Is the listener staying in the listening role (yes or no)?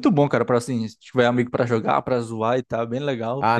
no